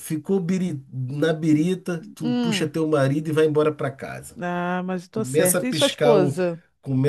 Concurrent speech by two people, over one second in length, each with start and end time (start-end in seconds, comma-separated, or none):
5.1-6.4